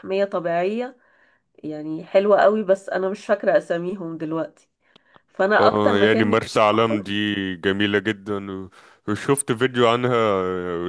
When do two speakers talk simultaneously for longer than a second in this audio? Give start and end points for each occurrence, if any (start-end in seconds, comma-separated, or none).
5.6-7.1